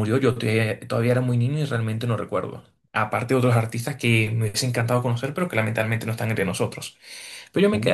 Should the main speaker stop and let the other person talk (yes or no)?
no